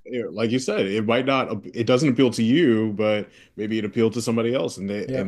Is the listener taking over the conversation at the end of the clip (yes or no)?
no